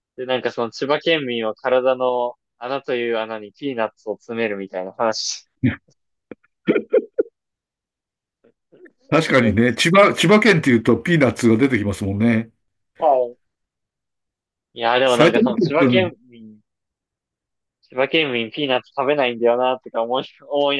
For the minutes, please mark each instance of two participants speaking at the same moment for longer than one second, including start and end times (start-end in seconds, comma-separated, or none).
15.0-16.2